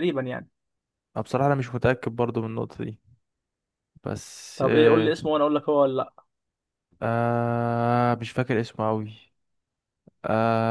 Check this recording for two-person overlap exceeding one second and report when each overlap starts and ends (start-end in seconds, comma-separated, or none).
none